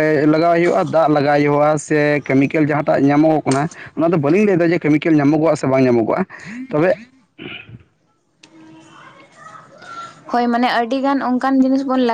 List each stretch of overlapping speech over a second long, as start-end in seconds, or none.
none